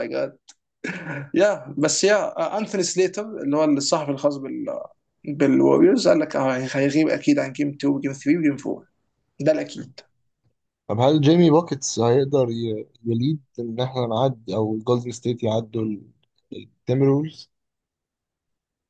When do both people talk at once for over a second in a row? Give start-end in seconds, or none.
none